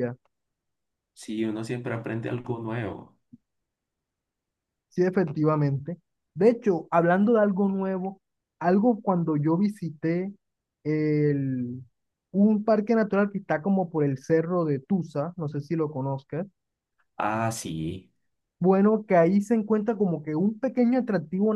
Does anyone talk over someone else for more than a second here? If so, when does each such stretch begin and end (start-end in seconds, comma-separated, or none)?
none